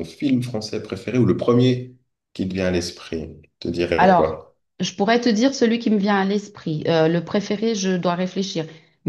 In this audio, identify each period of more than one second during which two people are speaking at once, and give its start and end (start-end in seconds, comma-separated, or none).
none